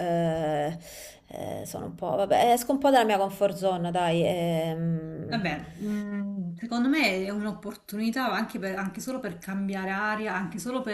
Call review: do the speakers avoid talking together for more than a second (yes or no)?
yes